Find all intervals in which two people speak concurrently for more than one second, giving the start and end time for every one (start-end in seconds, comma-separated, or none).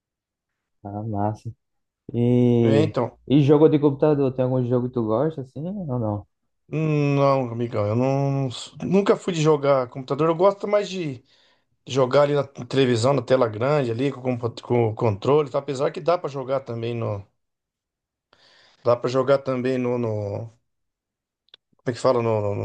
none